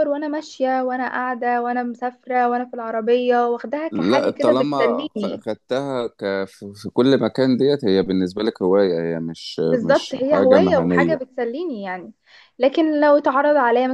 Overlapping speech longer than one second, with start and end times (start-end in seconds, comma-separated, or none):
3.9-5.4, 9.7-11.2